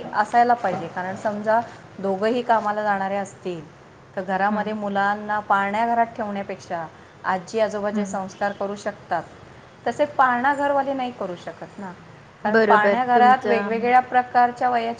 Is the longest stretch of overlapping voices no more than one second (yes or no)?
no